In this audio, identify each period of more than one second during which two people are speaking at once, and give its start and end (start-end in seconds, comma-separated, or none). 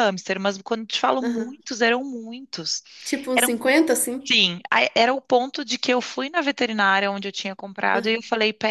none